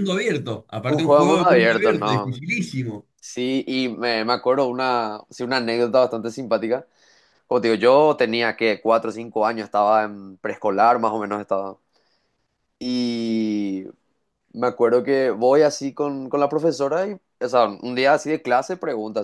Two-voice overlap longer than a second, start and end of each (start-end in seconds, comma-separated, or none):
0.8-2.4